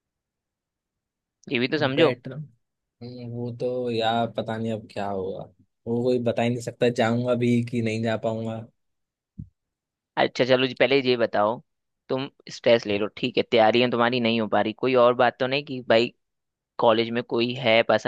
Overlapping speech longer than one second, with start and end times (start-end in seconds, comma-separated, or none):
none